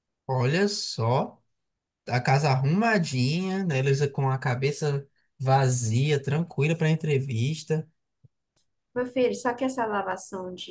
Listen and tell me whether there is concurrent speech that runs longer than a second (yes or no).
no